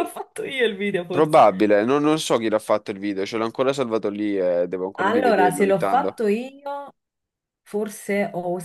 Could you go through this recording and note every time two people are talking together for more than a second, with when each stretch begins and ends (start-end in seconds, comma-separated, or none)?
5.0-6.2